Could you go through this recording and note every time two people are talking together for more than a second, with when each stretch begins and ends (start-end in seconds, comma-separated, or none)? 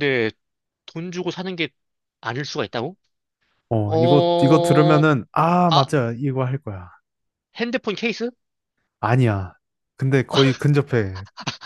3.9-5.1